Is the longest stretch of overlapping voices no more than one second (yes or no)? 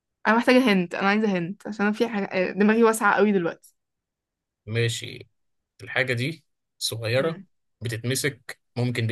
yes